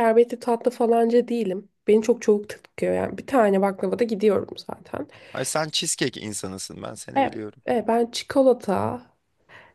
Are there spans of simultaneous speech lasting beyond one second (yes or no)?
no